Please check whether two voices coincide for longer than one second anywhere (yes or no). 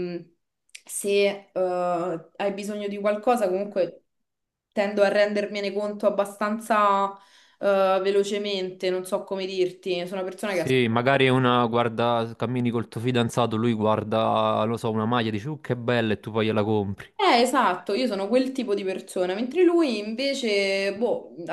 no